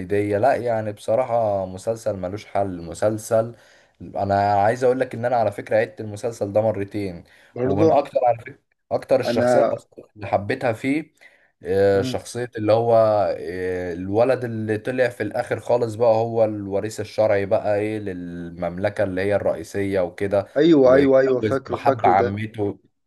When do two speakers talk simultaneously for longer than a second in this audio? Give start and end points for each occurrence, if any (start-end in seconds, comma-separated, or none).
20.8-22.4